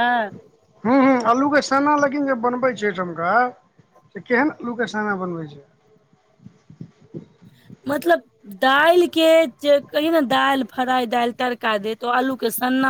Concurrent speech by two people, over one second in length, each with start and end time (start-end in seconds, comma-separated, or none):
none